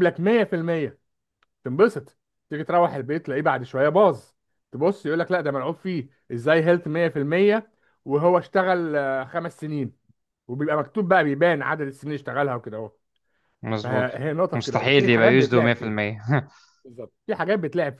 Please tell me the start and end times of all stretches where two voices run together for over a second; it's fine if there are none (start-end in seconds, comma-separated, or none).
13.8-15.9